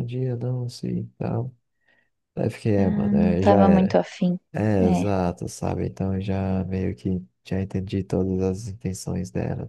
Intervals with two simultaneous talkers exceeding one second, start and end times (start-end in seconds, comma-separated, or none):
2.8-4.0